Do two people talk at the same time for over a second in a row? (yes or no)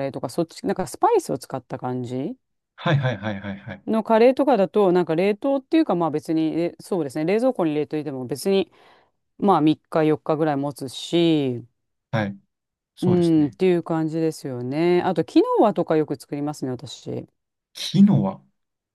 no